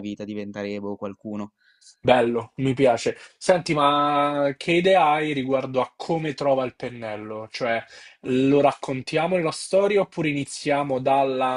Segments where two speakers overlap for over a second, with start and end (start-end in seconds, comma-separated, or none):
none